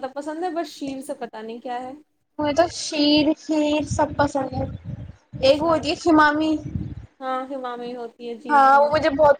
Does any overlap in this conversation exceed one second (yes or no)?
no